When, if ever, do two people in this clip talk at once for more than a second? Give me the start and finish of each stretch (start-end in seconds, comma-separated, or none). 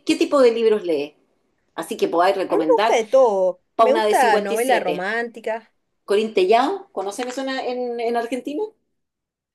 3.7-5.1